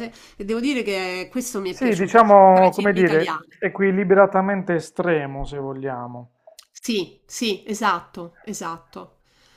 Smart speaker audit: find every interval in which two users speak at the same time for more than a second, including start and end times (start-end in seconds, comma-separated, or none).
1.6-3.6